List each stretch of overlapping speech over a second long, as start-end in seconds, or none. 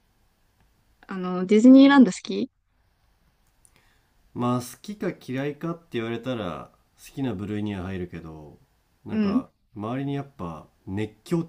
none